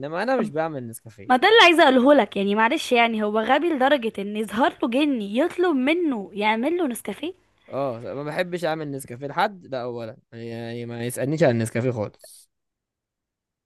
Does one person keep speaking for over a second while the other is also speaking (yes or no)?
no